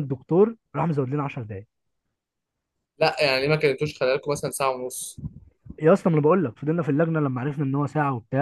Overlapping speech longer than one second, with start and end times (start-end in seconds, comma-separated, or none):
none